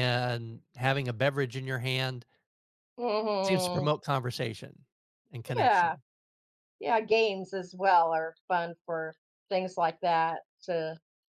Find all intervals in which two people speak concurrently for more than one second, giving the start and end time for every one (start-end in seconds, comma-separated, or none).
none